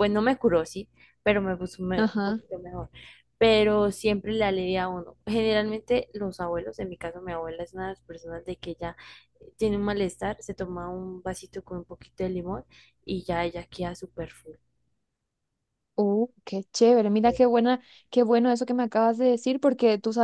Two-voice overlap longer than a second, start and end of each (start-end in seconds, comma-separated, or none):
none